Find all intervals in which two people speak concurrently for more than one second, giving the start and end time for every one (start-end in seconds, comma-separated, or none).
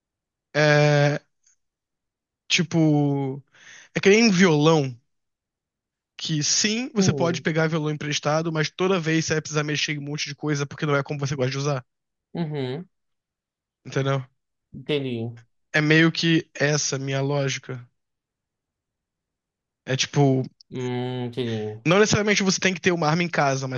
none